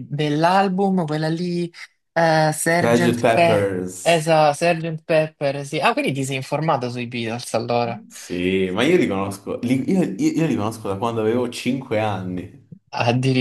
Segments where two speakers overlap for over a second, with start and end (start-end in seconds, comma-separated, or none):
2.8-4.3